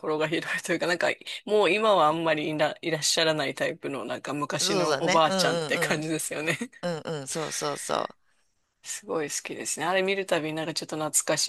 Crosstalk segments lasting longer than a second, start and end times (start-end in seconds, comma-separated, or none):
4.6-6.1